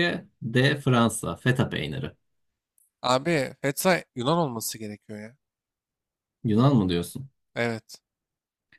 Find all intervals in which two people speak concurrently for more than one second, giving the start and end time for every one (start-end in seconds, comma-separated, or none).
none